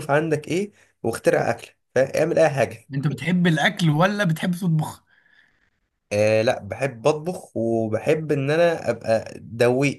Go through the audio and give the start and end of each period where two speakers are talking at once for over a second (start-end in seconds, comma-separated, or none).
none